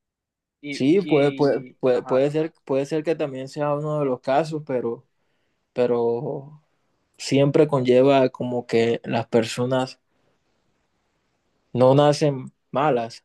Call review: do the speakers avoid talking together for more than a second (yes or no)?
no